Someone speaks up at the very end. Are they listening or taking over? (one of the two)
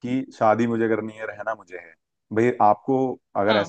listening